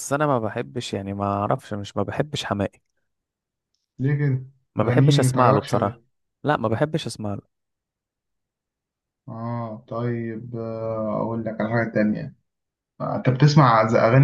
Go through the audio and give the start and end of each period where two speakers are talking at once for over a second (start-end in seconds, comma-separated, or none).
4.8-6.0